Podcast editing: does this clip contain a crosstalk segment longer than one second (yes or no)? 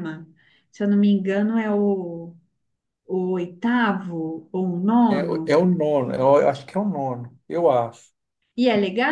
no